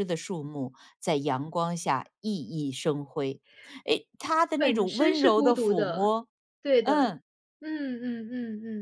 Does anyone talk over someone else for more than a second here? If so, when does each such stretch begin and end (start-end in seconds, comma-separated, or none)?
4.6-6.1